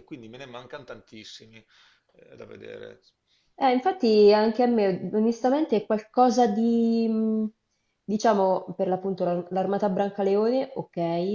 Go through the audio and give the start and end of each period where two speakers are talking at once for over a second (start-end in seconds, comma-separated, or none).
none